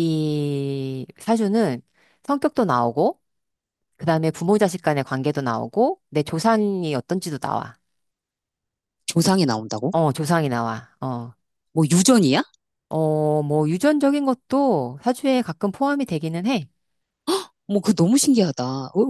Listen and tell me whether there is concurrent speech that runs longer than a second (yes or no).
no